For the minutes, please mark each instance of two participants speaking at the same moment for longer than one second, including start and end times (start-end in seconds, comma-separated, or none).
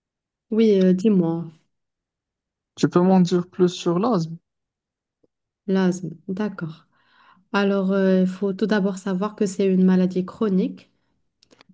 none